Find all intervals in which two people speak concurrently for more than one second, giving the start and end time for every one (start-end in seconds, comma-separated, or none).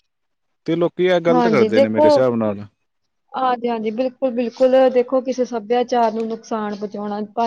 none